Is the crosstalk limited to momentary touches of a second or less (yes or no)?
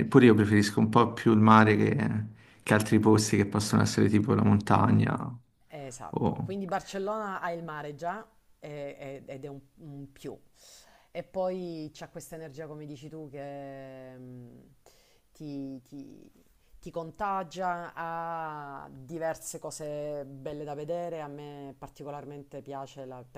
yes